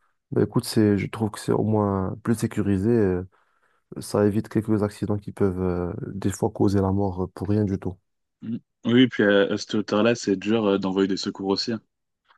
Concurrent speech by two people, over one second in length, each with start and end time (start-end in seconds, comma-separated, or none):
none